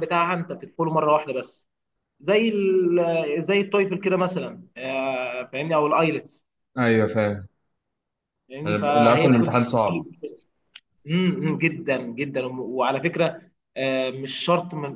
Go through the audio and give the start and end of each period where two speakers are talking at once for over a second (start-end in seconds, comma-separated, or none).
8.7-10.1